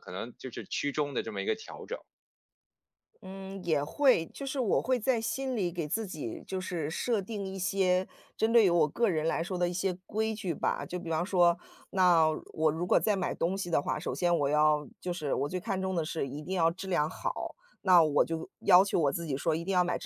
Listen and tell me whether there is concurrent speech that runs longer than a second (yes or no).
no